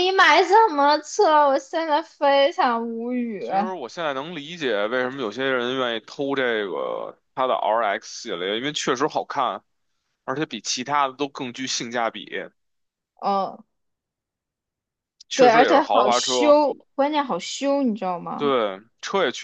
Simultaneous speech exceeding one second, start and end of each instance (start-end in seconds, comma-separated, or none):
15.3-16.6